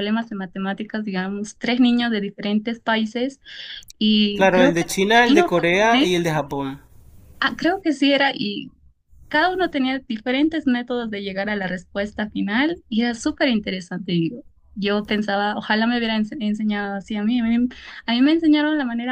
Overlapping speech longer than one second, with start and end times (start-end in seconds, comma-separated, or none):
4.3-6.1